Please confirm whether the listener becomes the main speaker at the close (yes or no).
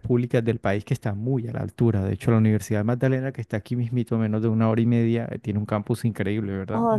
yes